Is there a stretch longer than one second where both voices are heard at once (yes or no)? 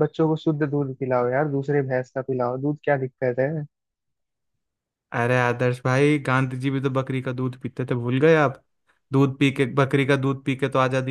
no